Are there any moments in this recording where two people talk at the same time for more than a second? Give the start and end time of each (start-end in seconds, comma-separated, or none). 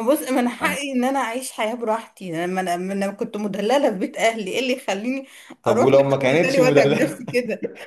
5.7-7.2